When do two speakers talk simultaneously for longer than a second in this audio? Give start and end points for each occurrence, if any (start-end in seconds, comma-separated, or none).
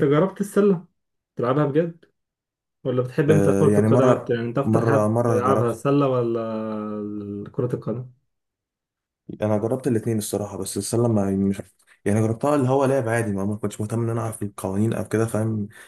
3.3-5.8